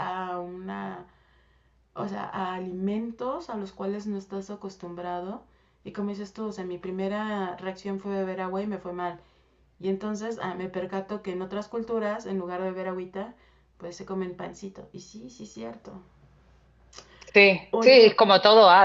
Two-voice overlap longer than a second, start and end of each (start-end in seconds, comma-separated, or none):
none